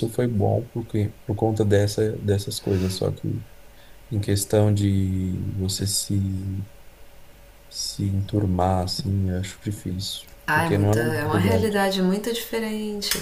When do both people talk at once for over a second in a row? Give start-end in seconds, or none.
10.5-11.9